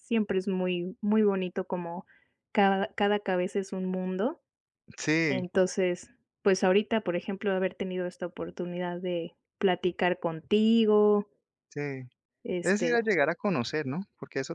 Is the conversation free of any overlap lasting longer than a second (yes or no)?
yes